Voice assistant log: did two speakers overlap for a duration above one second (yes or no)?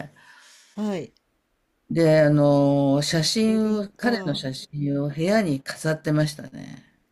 yes